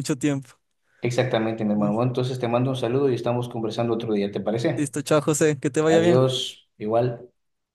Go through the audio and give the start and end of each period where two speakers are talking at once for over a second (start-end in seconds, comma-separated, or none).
none